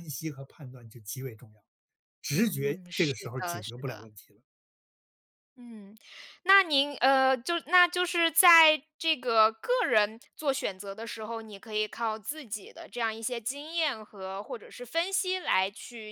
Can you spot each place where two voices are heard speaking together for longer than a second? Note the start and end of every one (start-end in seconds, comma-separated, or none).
2.3-4.1